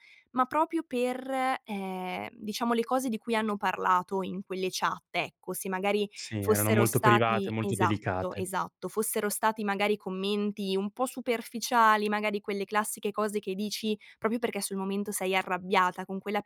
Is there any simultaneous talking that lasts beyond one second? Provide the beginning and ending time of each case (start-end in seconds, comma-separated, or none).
6.2-8.5